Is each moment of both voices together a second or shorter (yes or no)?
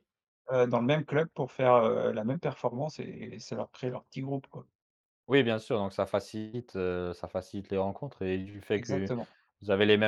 yes